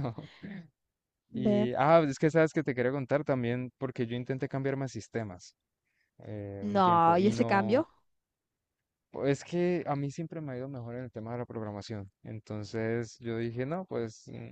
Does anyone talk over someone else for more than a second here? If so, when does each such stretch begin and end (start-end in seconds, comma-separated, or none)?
6.6-7.9